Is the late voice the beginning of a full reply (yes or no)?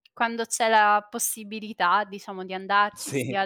no